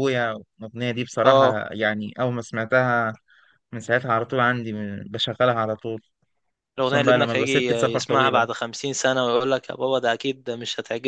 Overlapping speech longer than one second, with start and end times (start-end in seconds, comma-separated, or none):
6.8-8.5